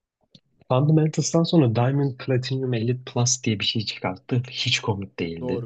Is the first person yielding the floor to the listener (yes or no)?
yes